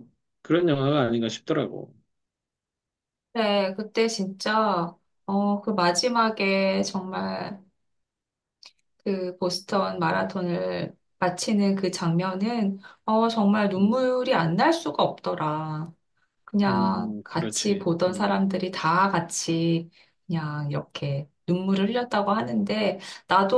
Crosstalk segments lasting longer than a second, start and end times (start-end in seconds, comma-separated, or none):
16.7-18.4